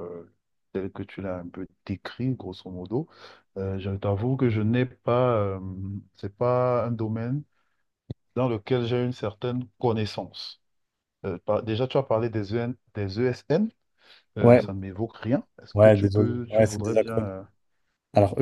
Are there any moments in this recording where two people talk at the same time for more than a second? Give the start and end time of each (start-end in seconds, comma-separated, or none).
15.7-17.3